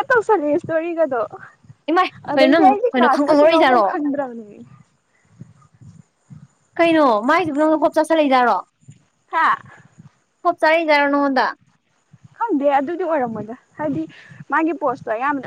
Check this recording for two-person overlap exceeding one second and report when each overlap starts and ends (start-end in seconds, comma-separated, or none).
2.3-3.9